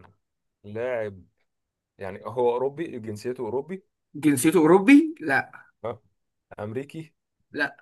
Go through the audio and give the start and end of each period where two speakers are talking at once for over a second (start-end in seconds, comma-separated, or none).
none